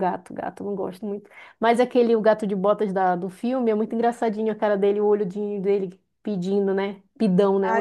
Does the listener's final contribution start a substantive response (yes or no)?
yes